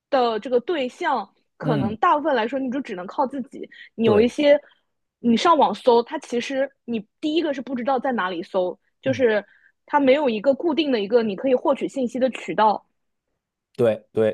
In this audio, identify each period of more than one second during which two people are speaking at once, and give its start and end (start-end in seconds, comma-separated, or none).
none